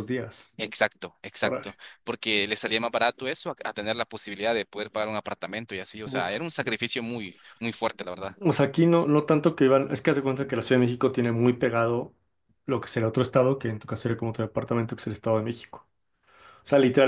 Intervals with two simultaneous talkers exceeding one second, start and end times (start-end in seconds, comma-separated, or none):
none